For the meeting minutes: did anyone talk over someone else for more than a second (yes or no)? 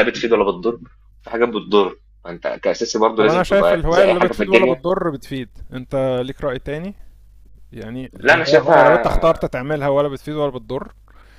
yes